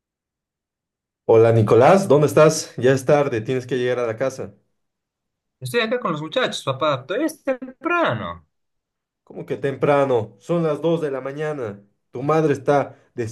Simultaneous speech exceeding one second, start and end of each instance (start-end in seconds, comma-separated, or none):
none